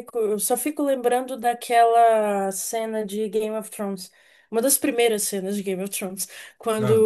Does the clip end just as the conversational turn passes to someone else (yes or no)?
no